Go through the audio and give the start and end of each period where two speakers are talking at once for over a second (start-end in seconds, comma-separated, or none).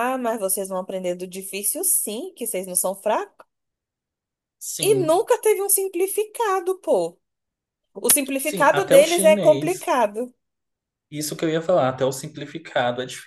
8.4-9.9